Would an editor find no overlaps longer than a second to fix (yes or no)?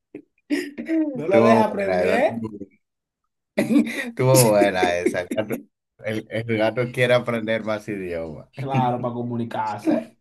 no